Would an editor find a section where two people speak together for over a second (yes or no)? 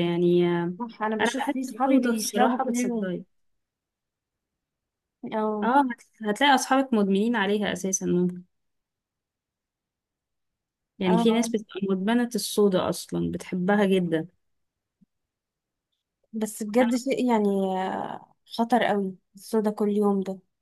yes